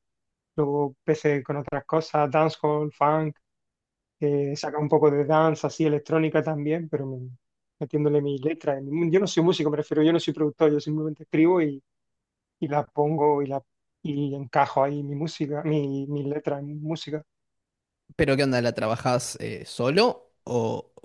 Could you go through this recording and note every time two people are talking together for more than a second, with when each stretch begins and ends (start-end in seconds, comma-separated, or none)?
none